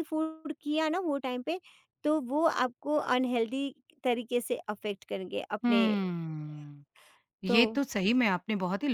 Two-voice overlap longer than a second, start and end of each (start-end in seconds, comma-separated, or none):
none